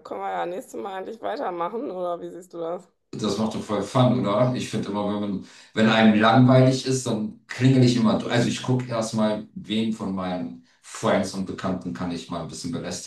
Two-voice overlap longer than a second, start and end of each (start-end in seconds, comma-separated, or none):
none